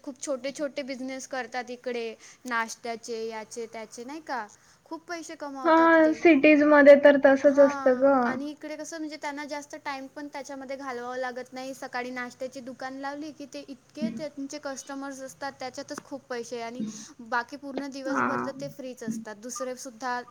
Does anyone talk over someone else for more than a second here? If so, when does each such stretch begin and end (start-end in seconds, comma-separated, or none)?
none